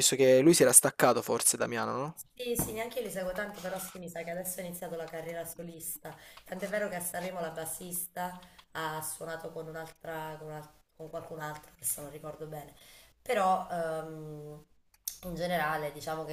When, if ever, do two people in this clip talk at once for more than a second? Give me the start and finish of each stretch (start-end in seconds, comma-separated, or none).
none